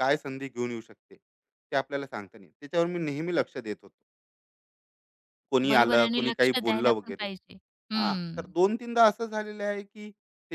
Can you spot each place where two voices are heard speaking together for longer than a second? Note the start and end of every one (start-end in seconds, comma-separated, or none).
5.7-7.3